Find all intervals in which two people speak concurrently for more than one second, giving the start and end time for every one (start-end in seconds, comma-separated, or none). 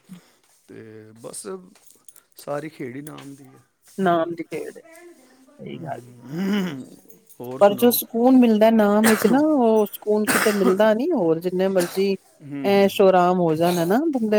none